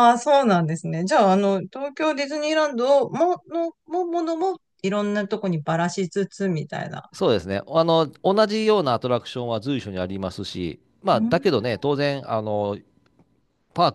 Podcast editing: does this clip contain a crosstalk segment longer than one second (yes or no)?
no